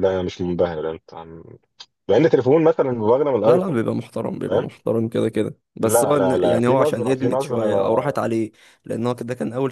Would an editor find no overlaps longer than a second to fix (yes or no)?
no